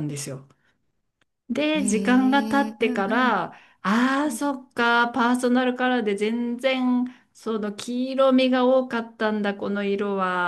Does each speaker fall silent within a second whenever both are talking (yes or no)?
no